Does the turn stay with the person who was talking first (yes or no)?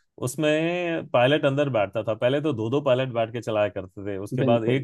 yes